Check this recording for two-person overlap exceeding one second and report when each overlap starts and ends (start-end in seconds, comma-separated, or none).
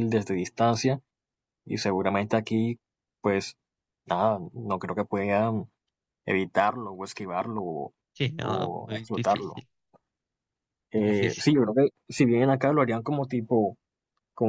8.4-9.6